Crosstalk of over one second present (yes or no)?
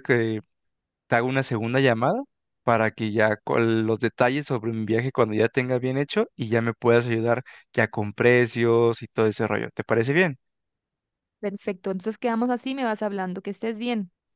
no